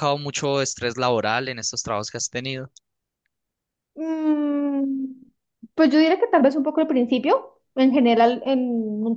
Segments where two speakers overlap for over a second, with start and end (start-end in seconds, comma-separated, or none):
none